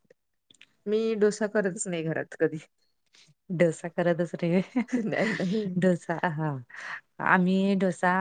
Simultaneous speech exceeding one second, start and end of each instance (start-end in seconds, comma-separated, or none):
none